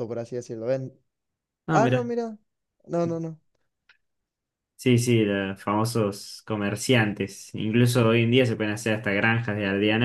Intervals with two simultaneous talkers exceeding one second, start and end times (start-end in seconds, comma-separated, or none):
none